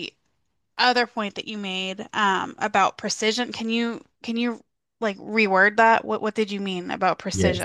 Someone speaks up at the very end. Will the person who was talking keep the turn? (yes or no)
no